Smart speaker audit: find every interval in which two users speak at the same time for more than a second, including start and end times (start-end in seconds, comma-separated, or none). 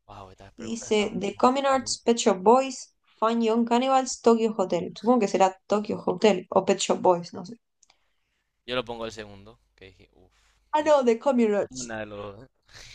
0.6-2.0